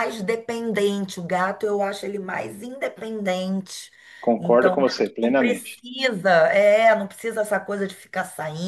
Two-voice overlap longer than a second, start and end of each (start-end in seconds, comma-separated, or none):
4.4-5.8